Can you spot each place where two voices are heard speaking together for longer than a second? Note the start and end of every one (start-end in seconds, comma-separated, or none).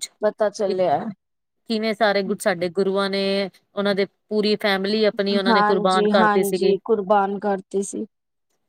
5.5-6.7